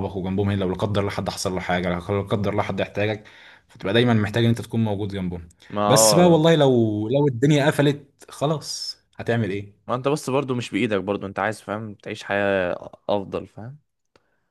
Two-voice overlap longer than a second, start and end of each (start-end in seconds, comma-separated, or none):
none